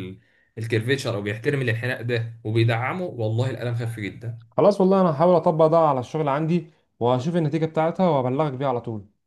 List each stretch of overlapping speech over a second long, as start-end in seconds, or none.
none